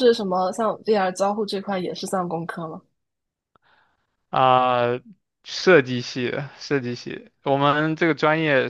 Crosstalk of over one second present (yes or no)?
no